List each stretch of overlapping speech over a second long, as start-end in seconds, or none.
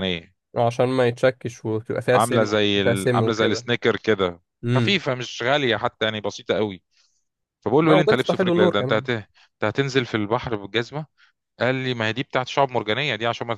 2.1-3.6, 7.8-9.1